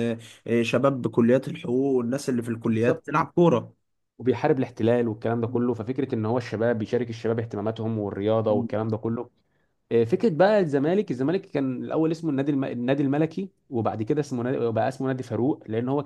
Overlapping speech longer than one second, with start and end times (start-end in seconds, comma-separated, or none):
none